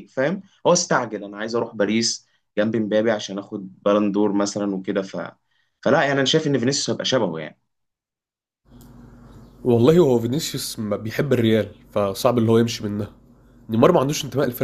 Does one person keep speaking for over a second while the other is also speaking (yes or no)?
no